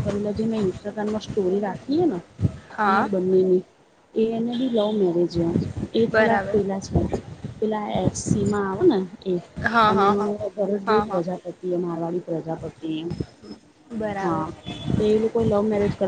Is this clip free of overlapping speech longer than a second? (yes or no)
yes